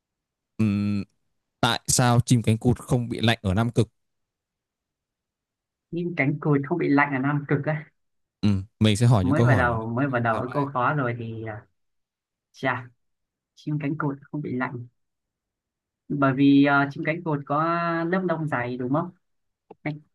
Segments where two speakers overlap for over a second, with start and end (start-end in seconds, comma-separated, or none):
9.2-10.7